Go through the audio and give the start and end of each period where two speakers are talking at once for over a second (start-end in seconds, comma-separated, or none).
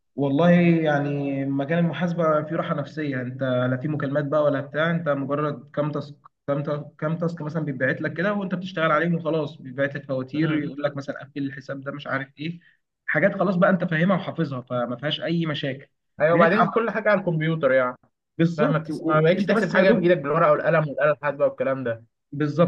18.6-20.1